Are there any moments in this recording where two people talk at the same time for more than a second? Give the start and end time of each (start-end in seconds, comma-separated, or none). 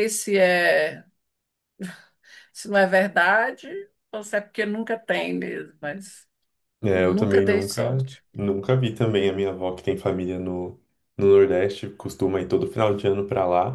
6.9-8.2